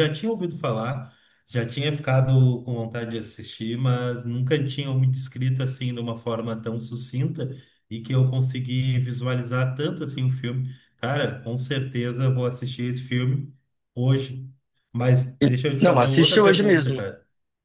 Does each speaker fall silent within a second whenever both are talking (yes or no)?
no